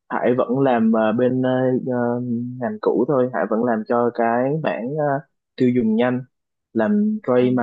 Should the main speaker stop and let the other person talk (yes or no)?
no